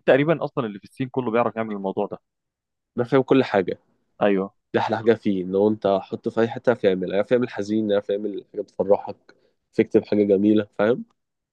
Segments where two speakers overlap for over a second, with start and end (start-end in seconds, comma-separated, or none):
none